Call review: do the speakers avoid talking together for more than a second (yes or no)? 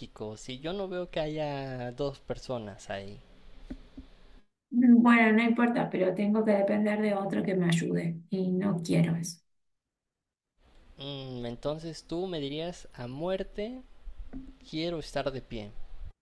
yes